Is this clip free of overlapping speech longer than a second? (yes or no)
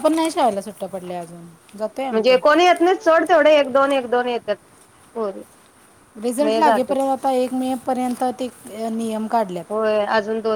yes